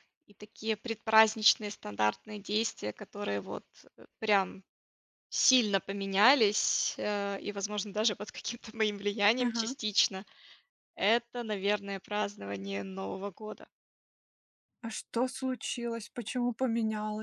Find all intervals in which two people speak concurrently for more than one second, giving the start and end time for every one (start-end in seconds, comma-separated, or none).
none